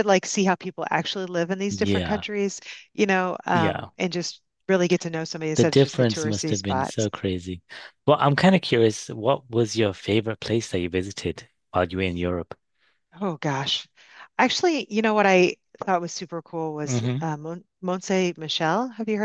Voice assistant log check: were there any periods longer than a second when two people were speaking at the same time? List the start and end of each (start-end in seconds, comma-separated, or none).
5.6-7.1